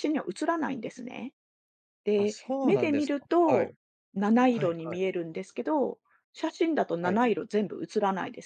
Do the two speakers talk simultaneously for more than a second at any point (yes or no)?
yes